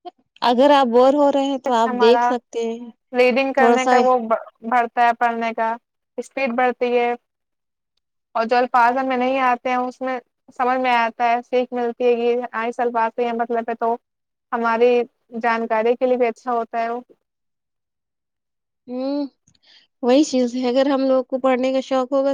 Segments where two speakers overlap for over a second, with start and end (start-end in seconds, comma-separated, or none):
none